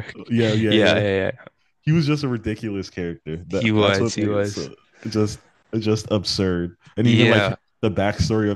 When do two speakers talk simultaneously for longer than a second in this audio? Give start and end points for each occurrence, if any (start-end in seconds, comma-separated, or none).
3.5-4.7